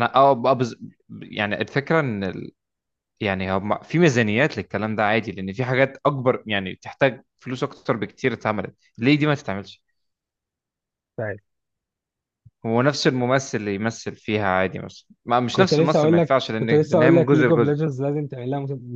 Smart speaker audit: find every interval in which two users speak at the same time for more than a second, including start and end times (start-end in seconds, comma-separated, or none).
15.5-17.8